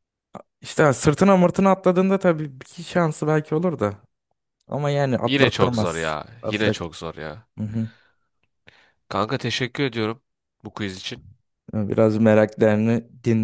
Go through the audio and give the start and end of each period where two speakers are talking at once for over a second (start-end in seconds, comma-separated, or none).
5.2-6.7